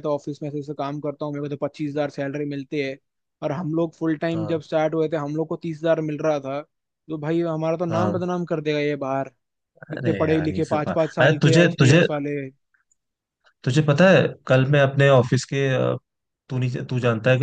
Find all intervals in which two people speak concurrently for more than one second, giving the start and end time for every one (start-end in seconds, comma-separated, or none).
9.9-12.0